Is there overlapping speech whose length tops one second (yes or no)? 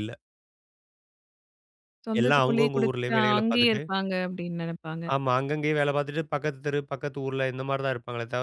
yes